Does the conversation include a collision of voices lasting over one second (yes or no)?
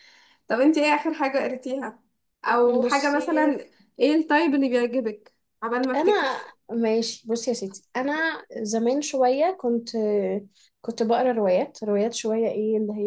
no